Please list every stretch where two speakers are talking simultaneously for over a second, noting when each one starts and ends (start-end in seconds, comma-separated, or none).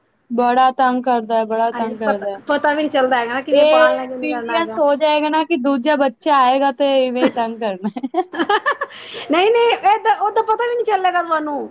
3.5-4.8